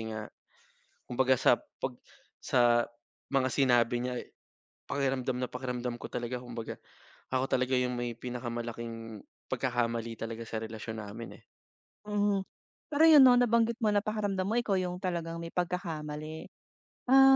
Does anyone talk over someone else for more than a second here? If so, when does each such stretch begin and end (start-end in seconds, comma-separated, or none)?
none